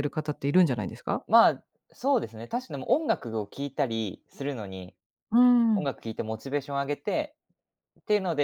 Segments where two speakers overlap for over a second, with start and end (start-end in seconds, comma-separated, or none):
none